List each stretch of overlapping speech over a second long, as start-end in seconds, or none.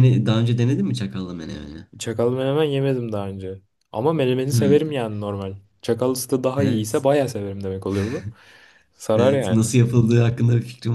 none